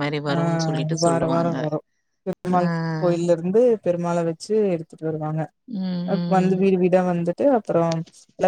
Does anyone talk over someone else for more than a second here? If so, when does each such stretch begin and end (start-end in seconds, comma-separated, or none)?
none